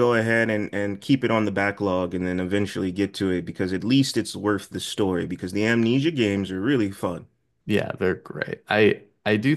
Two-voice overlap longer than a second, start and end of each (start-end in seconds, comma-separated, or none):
none